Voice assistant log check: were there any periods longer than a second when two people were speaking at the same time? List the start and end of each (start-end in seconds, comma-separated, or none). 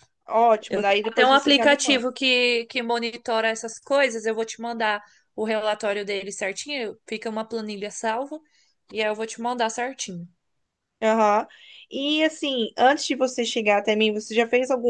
0.7-2.1